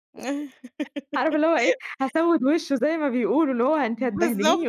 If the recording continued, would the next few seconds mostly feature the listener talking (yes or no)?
no